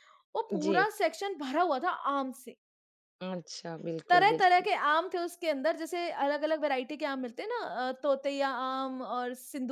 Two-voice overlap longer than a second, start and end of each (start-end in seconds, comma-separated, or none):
none